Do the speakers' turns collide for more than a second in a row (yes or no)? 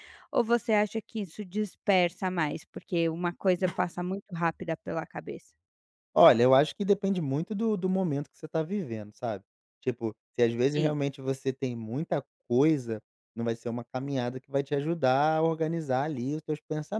no